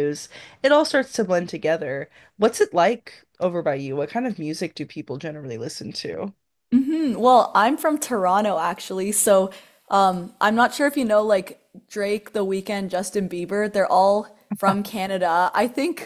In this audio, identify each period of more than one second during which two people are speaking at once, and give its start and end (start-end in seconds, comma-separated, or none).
none